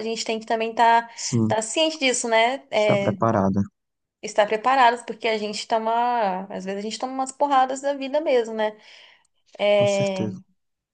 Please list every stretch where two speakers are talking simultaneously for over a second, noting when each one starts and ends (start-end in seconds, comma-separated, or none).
none